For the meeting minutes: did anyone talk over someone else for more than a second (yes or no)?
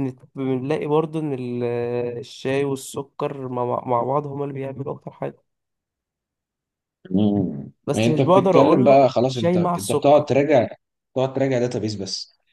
yes